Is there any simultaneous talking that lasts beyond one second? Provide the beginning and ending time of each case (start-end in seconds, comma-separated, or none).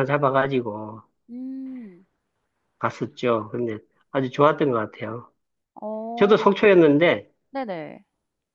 none